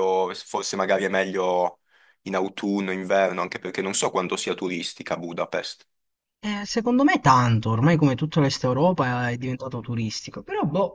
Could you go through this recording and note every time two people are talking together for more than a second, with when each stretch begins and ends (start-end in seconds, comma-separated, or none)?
none